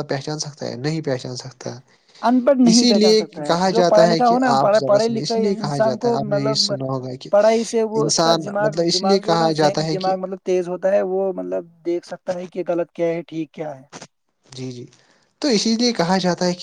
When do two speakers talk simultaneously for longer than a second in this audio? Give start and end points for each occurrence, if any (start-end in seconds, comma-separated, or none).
2.7-6.7, 8.0-10.1